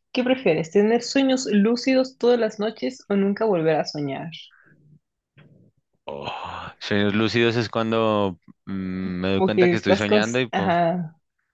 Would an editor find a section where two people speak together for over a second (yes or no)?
yes